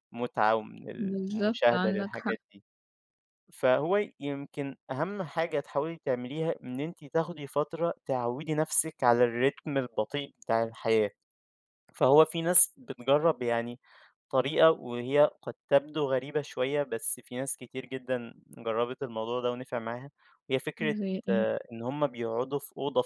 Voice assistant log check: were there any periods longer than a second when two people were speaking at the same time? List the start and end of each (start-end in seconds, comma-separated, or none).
1.0-2.4